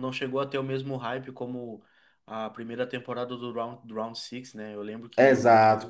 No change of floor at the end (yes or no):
no